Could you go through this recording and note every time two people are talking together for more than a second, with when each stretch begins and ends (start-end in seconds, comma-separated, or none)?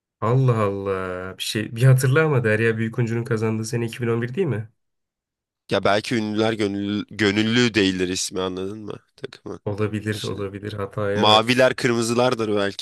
none